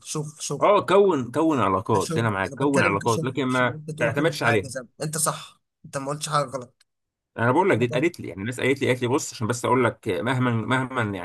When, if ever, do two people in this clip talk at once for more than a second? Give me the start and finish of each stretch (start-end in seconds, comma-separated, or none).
1.9-4.7